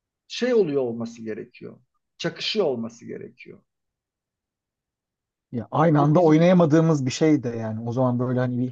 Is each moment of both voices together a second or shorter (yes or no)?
yes